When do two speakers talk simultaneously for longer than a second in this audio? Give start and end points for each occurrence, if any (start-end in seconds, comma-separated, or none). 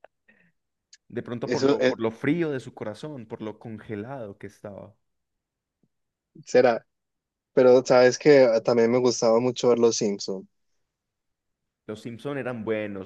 none